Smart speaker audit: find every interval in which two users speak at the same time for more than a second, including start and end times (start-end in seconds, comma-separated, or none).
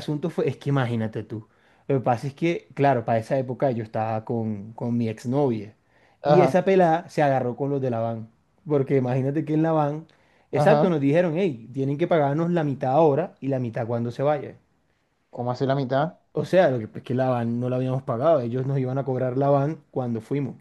none